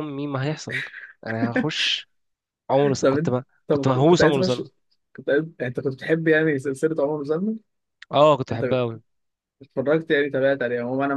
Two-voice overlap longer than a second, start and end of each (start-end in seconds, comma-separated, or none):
3.0-4.6